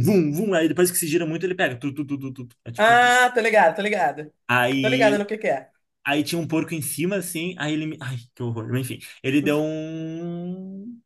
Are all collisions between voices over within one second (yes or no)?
yes